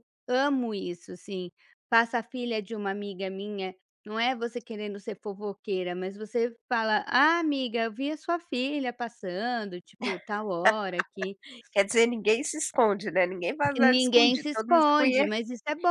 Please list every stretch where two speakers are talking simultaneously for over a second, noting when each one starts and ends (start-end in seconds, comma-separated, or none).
13.8-15.3